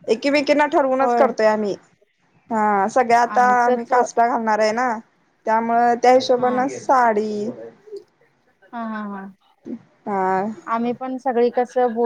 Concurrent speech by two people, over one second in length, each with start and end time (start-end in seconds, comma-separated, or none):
none